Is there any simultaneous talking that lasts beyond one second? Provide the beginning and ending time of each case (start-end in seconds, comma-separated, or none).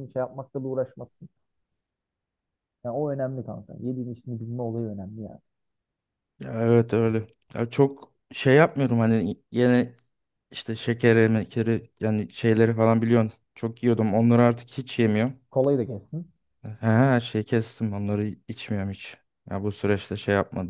none